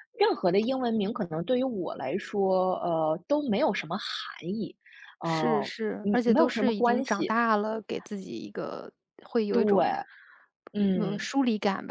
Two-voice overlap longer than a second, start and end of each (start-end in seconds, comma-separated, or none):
5.2-7.3